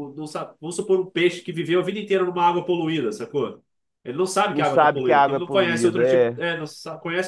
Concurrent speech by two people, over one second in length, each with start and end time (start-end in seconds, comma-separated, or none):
4.5-6.4